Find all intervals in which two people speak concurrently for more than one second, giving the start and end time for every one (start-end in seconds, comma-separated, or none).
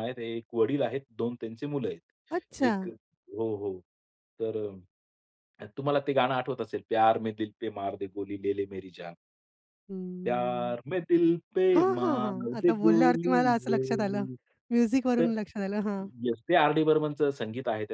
11.8-14.2